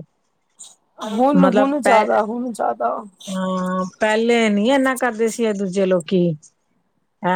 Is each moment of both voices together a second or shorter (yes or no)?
yes